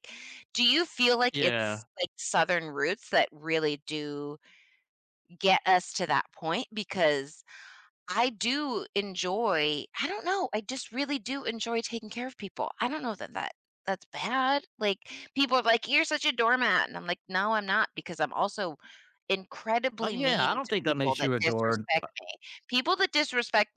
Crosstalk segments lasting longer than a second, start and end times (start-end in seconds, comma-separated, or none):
20.0-21.8